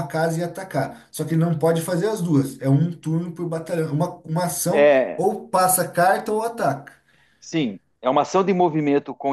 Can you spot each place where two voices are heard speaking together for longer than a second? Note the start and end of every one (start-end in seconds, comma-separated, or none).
none